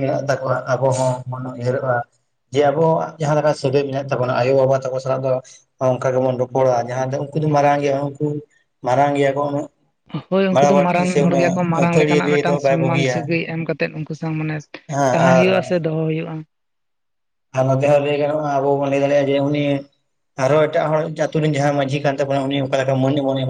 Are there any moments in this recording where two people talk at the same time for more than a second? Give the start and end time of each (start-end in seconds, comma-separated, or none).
10.5-13.2